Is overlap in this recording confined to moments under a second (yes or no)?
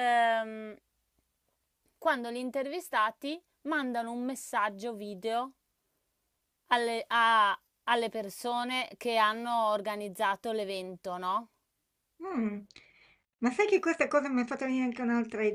yes